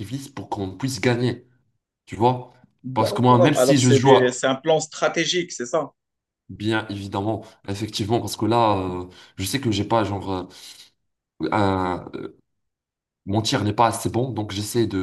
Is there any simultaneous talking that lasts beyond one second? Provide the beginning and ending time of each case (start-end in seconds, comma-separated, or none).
2.9-4.4